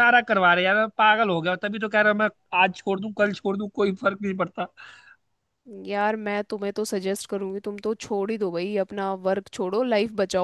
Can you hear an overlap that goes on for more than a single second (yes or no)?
no